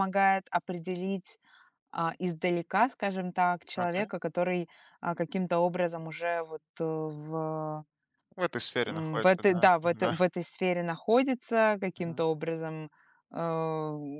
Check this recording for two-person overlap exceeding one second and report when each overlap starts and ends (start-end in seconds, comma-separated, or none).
8.8-10.2